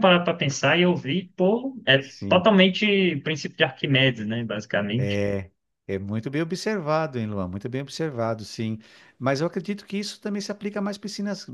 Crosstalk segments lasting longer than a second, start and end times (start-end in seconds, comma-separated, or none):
none